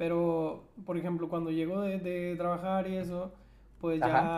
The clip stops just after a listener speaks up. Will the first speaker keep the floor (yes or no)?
yes